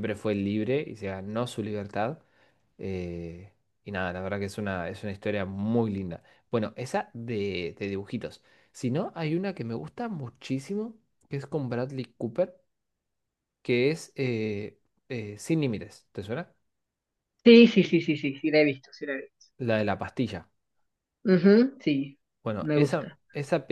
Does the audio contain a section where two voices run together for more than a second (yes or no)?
no